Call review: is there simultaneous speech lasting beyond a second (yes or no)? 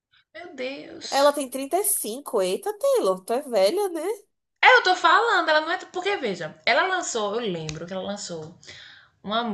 no